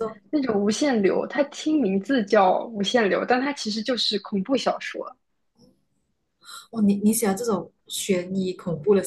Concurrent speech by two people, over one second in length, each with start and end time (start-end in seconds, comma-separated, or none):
none